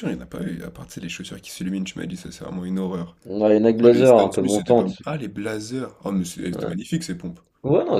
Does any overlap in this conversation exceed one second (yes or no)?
yes